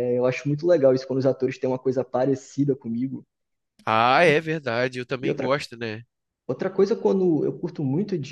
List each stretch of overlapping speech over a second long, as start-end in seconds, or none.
none